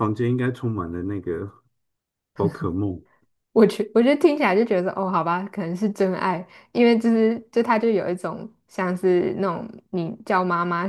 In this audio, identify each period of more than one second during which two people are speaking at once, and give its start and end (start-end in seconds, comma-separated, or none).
none